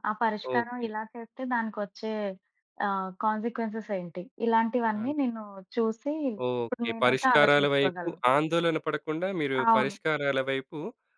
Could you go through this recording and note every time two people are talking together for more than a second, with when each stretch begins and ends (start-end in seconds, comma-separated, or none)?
6.6-8.2